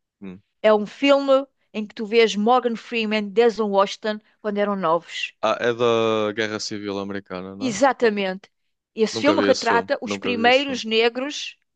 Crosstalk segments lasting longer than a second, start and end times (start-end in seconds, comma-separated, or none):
9.1-10.8